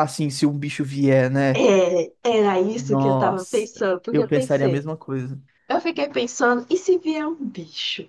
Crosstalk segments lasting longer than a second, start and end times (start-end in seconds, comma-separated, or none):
2.8-4.9